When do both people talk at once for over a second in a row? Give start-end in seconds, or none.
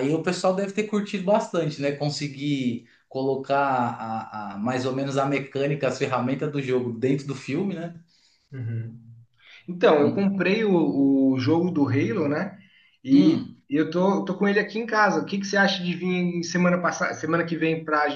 none